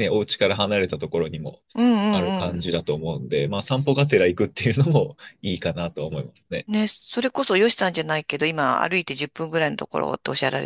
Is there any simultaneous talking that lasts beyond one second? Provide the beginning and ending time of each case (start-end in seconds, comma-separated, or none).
none